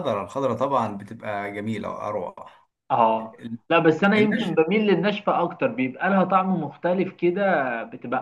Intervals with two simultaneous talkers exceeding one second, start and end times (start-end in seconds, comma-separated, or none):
none